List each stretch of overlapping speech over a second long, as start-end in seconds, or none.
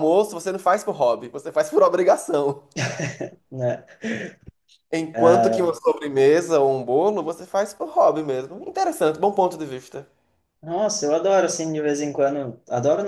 none